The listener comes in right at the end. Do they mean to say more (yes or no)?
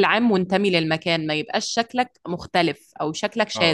yes